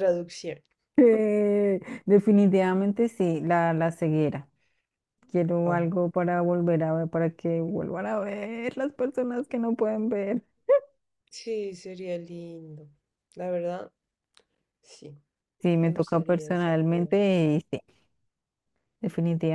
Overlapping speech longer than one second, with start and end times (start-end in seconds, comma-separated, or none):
15.8-17.1